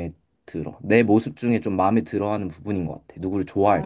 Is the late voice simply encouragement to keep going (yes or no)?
no